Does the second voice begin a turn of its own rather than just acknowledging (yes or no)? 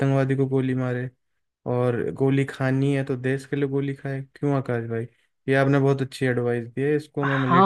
yes